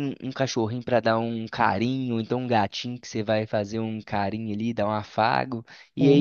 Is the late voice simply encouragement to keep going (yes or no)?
yes